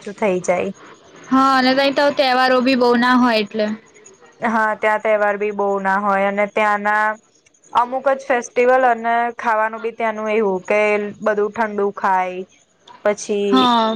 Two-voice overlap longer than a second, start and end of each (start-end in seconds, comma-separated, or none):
none